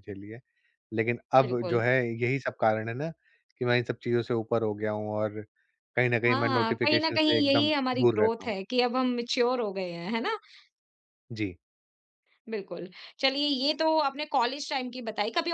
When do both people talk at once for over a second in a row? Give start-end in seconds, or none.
6.3-8.5